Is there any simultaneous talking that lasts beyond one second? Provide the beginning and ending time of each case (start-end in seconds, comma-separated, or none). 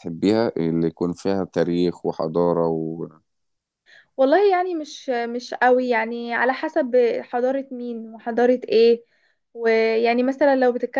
none